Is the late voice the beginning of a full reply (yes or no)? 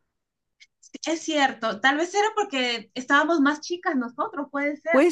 yes